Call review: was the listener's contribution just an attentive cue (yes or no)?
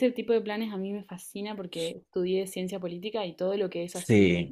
yes